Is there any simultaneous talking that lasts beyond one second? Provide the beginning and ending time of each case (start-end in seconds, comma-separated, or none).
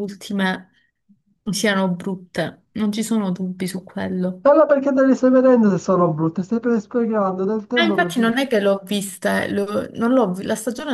none